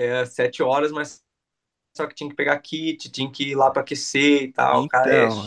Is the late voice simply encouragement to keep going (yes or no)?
no